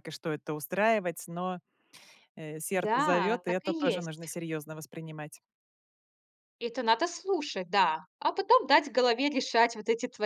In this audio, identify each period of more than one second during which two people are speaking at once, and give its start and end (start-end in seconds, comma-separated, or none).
2.7-4.3